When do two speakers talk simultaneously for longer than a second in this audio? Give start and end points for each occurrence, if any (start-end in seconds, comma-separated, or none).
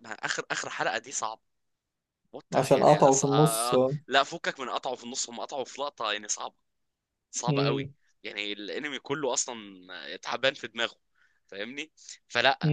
2.5-4.0